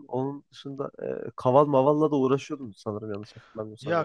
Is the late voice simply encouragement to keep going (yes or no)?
no